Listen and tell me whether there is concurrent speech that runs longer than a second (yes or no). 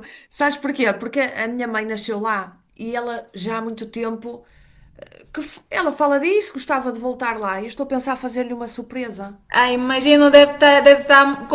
no